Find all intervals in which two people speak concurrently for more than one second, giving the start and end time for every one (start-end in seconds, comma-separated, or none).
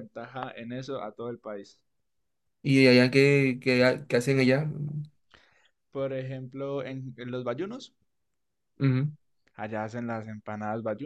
none